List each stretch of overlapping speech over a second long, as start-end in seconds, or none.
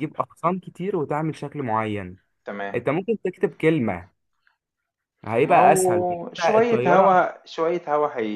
5.4-7.1